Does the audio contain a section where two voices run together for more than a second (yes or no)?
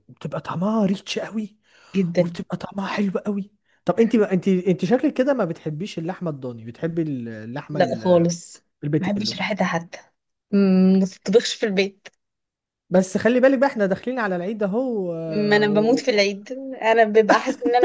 no